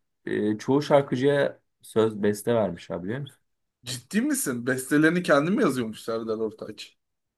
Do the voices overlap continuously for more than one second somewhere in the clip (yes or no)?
no